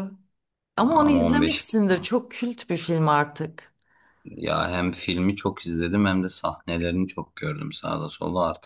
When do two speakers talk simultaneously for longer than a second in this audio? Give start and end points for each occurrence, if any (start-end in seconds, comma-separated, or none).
0.8-2.1